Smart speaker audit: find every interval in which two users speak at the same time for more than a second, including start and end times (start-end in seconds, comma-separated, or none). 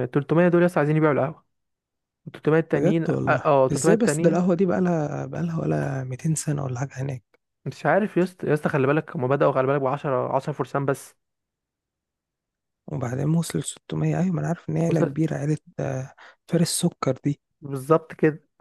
2.7-4.4